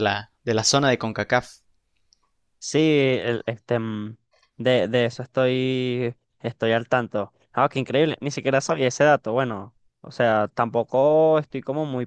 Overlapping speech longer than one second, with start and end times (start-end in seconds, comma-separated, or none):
none